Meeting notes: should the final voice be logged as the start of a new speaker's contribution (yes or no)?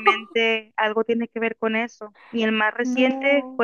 no